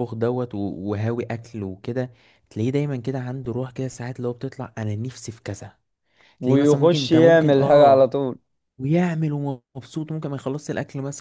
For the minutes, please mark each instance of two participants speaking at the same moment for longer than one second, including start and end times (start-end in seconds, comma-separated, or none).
6.4-8.1